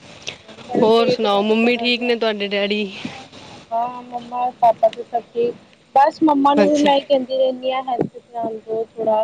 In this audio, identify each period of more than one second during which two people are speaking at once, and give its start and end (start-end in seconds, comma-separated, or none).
0.8-2.1